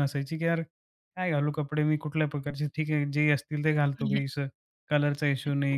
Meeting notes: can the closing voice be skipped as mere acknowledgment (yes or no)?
no